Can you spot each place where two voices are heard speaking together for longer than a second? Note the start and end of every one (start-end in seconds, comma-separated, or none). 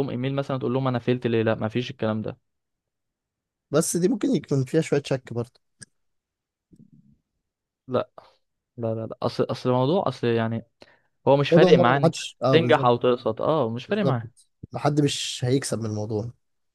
11.5-12.9